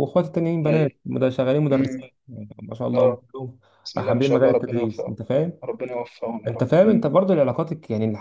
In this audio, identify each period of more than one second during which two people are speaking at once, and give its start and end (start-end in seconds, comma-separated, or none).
4.0-5.2